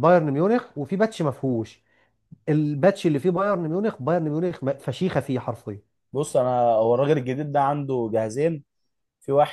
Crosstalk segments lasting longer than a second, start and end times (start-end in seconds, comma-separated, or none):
none